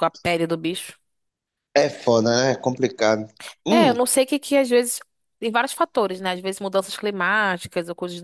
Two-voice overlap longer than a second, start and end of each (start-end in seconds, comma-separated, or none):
none